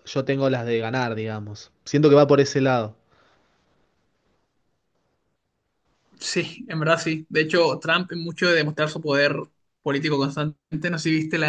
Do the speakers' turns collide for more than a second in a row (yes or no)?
no